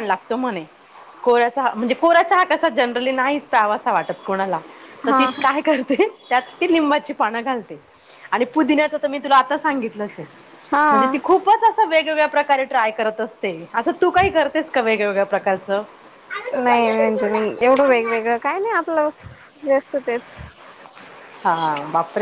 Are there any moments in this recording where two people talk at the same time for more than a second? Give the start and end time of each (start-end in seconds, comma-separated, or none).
none